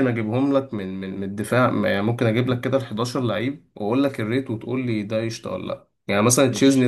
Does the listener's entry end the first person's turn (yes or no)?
no